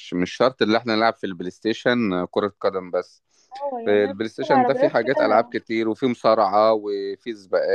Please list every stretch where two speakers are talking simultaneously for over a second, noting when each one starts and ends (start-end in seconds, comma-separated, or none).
3.9-5.6